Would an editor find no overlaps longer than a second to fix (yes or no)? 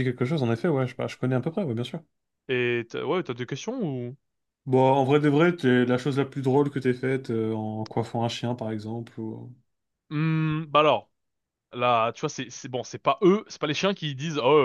yes